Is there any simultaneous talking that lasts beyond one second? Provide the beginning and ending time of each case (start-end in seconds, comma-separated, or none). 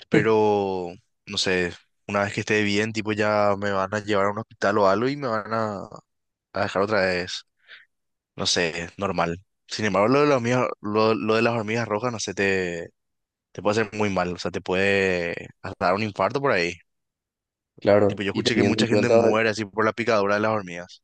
18.1-19.4